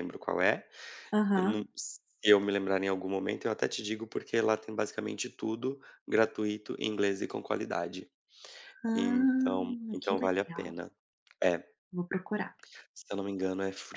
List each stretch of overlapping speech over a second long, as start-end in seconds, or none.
8.9-10.7